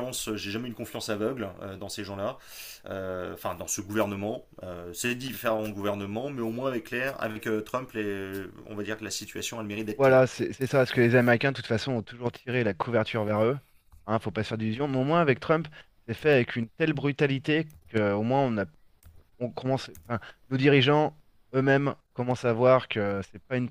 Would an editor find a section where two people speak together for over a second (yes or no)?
no